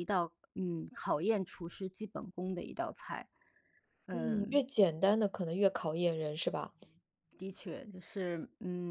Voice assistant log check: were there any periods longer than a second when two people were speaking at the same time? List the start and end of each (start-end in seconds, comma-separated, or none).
none